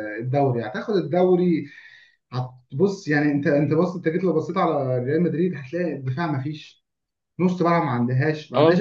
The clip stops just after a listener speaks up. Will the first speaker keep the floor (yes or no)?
yes